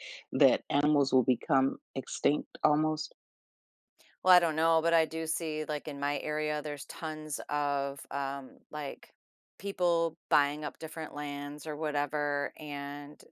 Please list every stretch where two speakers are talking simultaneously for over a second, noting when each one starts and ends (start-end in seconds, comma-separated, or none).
none